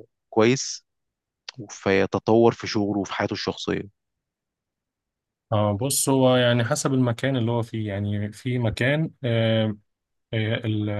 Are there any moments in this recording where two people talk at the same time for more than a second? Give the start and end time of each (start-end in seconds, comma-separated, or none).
none